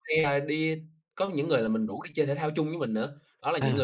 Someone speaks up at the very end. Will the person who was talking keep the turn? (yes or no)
yes